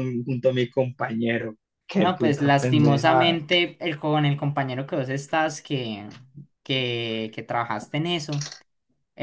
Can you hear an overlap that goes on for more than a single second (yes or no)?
yes